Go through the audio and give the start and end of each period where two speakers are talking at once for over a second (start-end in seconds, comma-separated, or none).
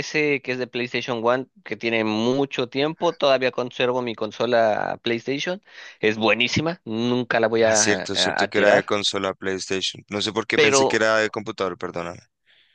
7.6-8.9